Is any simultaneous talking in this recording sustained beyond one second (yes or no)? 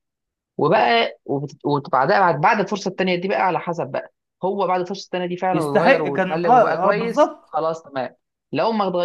yes